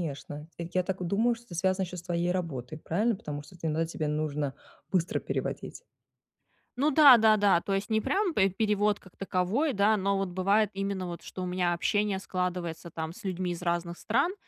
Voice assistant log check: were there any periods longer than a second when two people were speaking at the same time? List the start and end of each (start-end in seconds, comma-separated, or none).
none